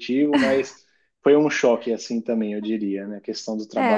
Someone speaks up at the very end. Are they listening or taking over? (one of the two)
taking over